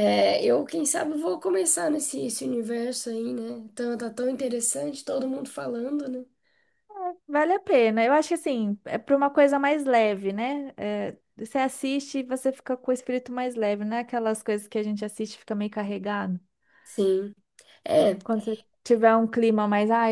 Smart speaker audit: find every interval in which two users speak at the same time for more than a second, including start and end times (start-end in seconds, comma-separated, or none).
none